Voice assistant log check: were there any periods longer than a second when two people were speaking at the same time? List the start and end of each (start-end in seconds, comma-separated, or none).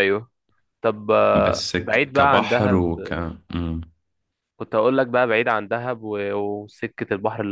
1.4-2.9